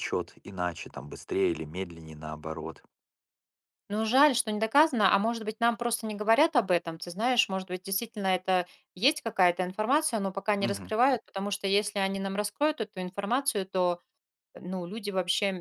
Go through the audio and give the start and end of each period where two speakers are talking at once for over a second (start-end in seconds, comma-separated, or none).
none